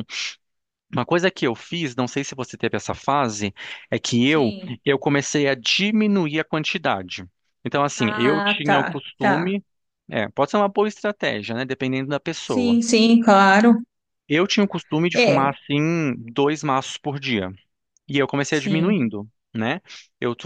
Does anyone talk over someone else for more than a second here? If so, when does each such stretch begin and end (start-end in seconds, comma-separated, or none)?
8.0-9.5